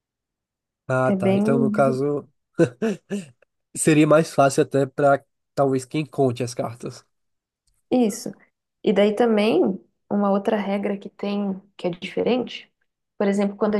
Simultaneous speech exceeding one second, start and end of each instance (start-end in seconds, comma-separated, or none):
none